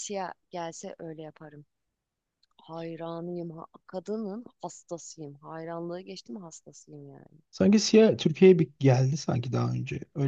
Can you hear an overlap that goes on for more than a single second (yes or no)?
no